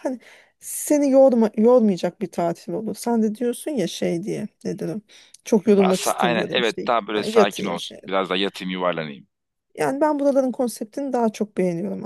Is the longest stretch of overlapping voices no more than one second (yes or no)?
no